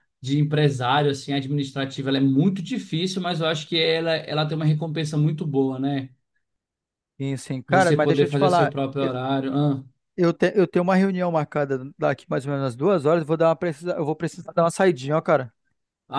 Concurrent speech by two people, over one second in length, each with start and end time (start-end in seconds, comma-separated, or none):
7.7-9.2